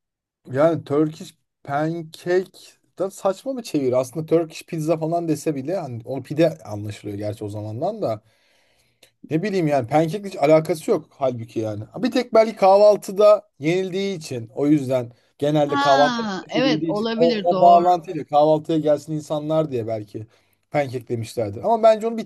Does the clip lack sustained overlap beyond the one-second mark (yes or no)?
no